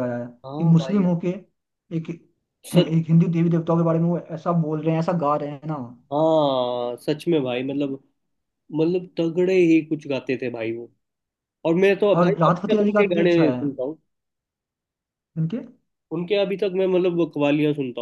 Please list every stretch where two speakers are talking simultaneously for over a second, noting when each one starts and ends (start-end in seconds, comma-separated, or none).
12.2-13.6